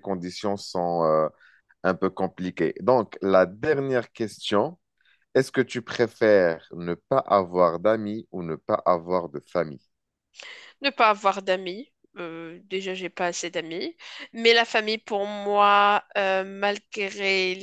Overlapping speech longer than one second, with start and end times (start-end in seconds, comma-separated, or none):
none